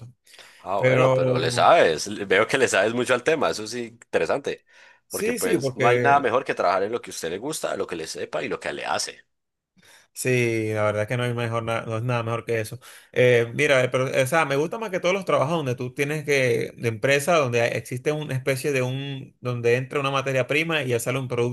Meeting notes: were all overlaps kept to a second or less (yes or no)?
no